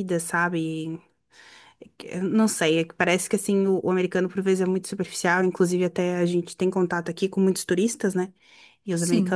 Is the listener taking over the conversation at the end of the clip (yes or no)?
no